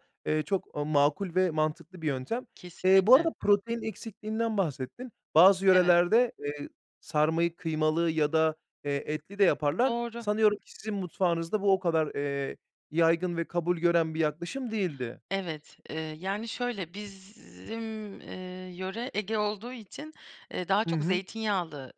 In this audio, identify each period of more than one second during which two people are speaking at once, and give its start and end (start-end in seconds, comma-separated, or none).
none